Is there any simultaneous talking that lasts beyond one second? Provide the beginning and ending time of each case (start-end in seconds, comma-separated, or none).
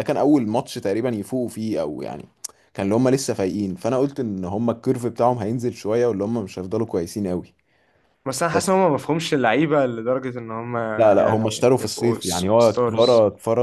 11.2-13.1